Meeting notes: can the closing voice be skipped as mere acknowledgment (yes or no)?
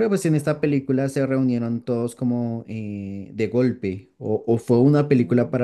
yes